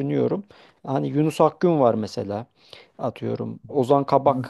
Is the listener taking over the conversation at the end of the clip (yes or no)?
no